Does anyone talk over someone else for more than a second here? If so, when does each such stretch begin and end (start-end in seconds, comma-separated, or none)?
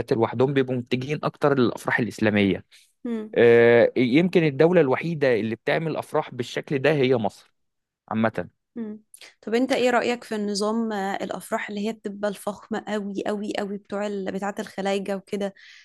none